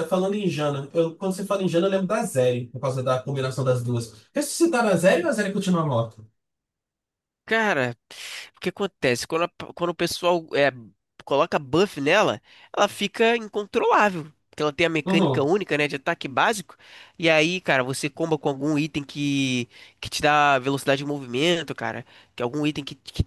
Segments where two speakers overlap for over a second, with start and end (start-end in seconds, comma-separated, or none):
none